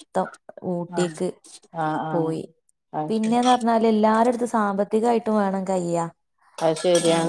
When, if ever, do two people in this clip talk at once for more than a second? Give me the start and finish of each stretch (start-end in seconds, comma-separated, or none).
none